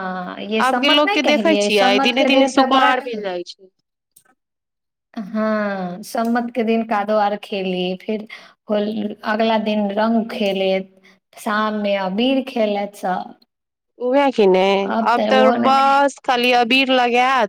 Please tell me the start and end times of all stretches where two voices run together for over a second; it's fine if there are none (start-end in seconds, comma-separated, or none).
0.7-3.2